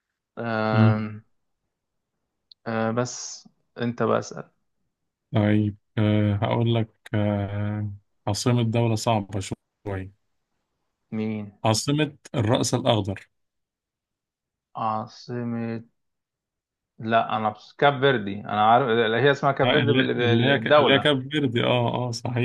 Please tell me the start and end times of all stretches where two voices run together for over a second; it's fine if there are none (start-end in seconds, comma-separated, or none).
19.6-21.1